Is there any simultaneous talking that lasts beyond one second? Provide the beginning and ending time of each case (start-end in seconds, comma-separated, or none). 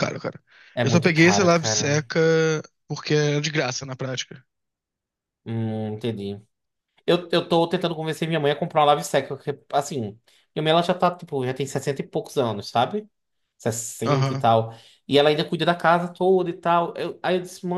0.8-2.0